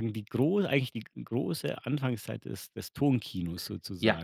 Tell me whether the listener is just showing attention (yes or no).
no